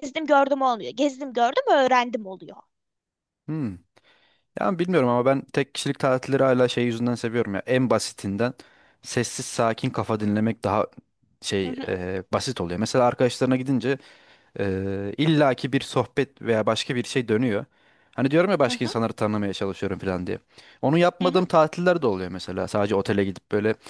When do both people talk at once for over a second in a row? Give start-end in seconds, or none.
none